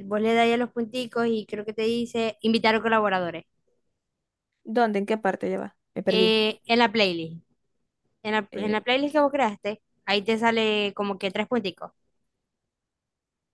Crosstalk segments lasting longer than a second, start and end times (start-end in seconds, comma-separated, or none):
none